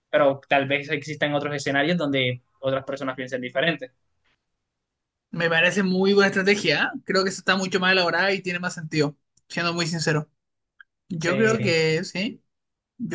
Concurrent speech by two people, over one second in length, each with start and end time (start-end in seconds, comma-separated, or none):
none